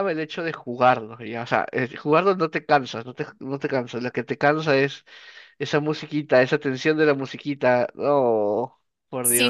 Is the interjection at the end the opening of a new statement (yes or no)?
yes